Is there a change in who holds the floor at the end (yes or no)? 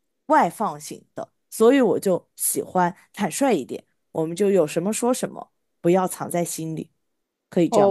yes